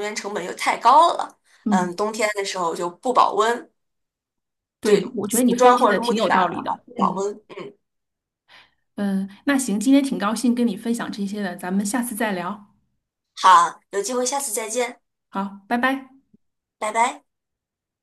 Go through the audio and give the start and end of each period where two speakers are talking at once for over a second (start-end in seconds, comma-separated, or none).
4.8-7.2